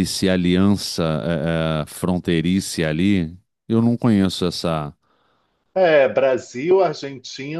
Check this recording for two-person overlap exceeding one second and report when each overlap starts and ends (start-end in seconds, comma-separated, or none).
none